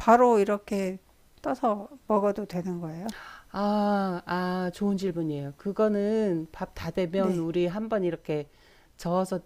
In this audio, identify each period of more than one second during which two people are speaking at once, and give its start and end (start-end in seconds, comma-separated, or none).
none